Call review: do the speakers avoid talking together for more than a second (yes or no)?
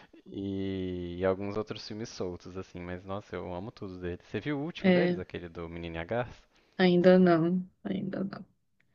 yes